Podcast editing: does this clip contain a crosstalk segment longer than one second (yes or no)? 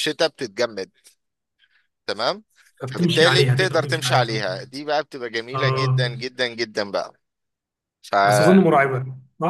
yes